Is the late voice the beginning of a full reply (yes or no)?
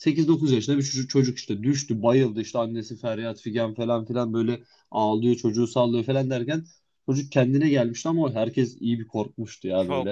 yes